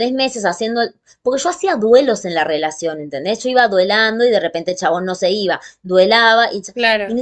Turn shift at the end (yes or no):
no